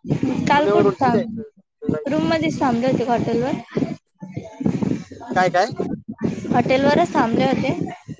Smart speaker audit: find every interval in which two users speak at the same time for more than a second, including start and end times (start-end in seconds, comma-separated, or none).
0.5-2.2